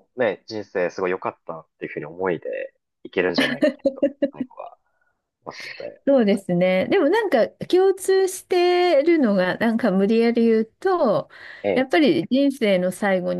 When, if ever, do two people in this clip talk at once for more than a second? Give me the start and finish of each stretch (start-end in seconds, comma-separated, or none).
none